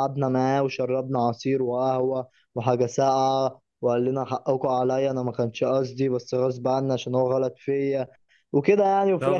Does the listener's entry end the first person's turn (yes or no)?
yes